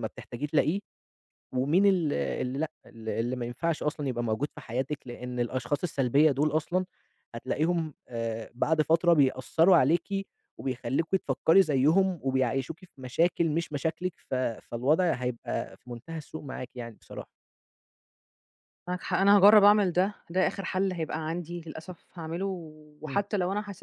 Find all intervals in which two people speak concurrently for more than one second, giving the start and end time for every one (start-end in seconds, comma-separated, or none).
none